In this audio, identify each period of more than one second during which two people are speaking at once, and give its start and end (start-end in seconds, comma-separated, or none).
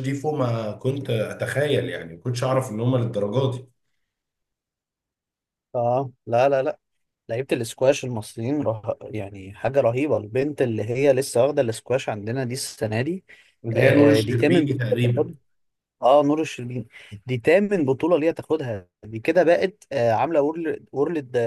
13.7-15.3